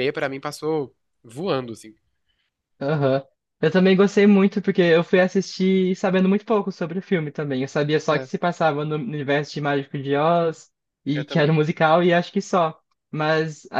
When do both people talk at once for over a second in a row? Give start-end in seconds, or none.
none